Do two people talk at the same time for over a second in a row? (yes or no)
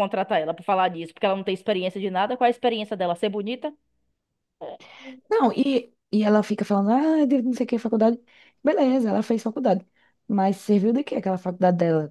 no